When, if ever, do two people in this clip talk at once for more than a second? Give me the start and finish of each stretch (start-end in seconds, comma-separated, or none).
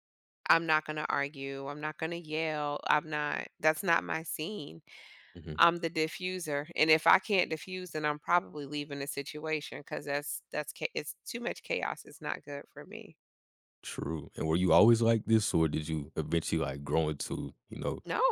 none